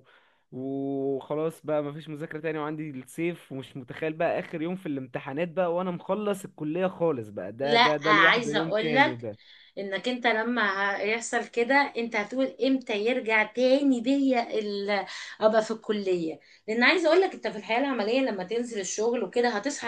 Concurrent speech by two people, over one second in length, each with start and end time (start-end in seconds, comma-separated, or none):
7.6-9.3